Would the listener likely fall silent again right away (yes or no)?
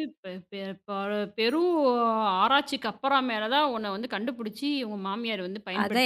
no